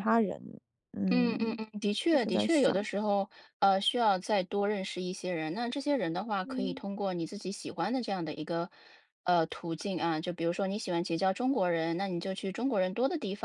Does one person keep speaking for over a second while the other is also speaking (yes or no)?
yes